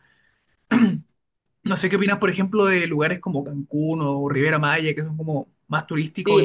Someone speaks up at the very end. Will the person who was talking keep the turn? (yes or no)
no